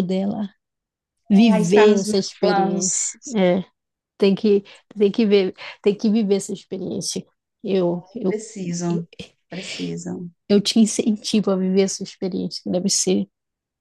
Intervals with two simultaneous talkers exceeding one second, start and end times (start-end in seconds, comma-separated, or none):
1.5-3.1